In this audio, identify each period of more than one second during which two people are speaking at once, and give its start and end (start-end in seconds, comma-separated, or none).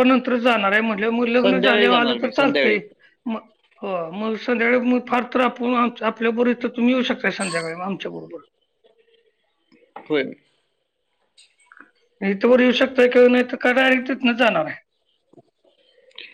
1.4-2.6